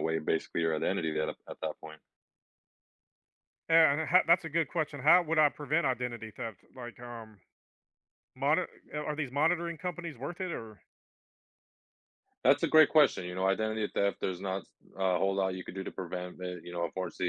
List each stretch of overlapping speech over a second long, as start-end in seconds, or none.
none